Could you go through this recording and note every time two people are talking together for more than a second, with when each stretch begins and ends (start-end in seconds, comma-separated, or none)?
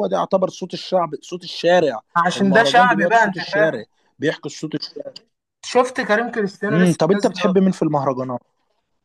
2.3-3.8